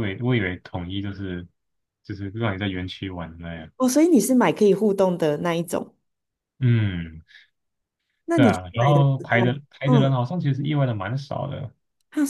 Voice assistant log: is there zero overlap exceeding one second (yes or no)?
no